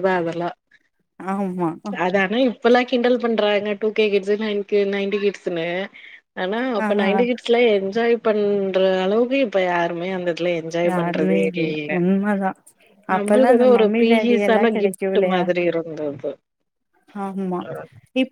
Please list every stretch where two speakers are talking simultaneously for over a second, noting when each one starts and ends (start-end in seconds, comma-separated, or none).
13.2-15.4